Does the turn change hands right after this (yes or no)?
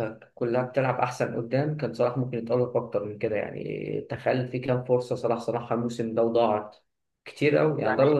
yes